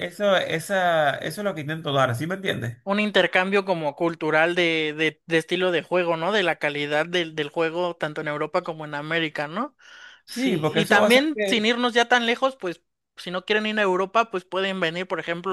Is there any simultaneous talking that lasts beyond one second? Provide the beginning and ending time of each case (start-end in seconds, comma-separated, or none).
10.3-11.6